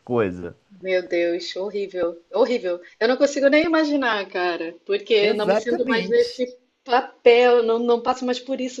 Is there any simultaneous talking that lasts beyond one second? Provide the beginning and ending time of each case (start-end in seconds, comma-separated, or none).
5.2-6.4